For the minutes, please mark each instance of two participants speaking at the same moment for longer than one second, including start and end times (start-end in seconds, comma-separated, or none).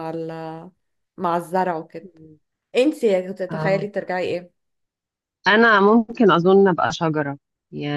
none